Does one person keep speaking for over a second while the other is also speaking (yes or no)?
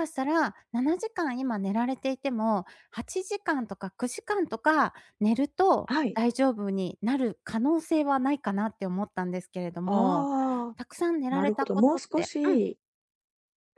yes